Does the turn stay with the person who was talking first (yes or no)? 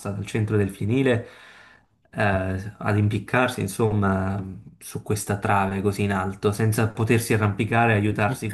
no